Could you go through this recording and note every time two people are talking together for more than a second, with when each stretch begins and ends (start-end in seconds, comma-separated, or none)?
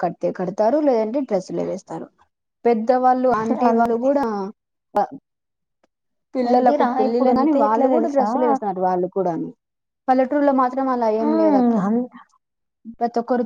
6.5-8.3